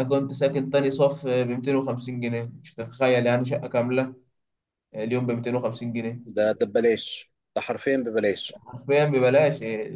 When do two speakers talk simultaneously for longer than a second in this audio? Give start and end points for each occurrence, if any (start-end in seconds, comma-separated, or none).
none